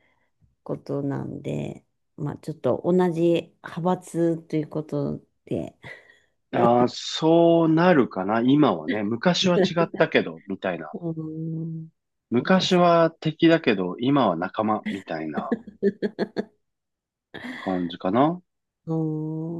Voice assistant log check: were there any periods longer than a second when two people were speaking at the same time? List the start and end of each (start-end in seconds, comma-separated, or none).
none